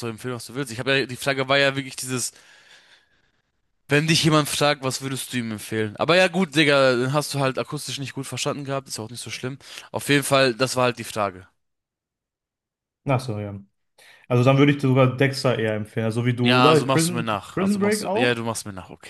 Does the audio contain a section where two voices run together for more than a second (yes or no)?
yes